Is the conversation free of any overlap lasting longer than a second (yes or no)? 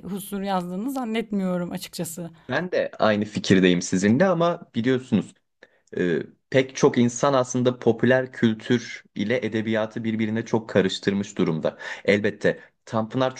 yes